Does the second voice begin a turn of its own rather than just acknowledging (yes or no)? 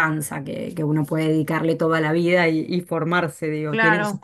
yes